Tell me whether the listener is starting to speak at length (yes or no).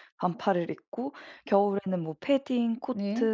no